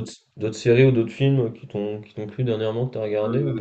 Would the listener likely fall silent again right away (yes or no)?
no